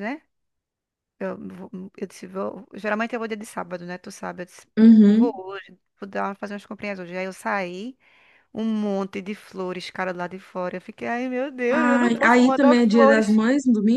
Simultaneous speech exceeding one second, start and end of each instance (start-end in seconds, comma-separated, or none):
11.7-13.4